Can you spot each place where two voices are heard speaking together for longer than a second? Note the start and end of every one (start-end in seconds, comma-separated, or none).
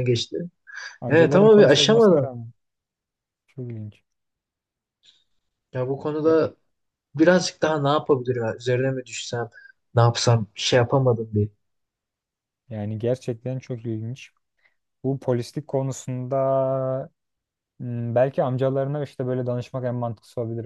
1.1-2.3